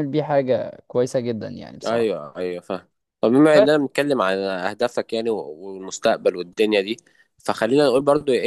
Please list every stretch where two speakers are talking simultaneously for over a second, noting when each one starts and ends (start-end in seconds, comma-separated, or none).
none